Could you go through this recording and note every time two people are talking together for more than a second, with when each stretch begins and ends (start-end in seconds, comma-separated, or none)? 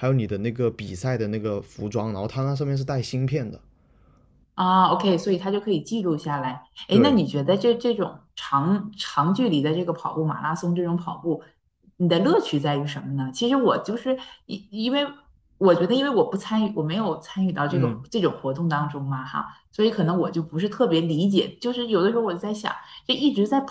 none